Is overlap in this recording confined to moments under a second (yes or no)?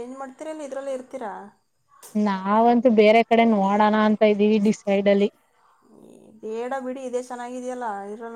yes